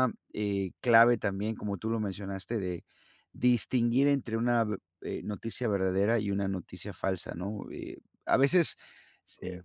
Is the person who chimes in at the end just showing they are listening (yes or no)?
yes